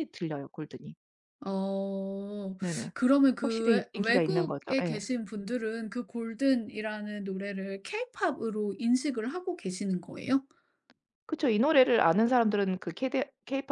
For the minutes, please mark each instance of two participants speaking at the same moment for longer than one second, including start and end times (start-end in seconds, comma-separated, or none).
3.4-5.0